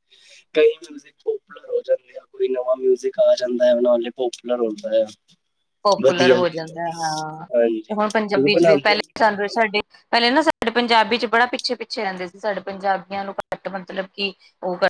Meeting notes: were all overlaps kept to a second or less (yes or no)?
no